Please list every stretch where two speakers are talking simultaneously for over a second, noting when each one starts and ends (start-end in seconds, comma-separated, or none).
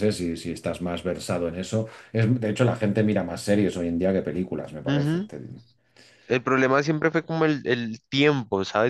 none